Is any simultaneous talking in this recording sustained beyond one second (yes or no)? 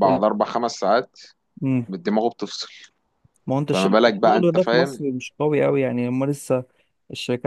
yes